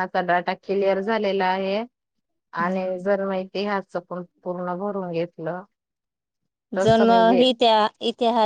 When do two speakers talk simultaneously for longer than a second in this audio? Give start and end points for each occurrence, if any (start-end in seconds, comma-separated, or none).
none